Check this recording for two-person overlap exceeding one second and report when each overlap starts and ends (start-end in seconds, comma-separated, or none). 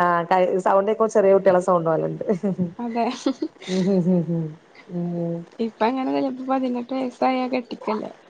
none